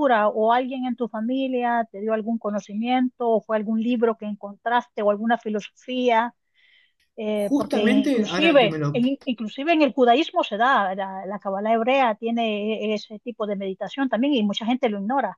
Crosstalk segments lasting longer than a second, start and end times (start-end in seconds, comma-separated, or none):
7.3-9.0